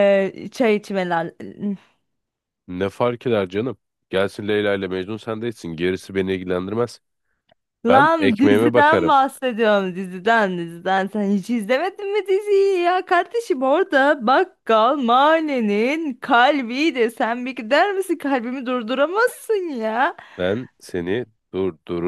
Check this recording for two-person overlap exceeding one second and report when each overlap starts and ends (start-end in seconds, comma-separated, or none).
7.9-9.1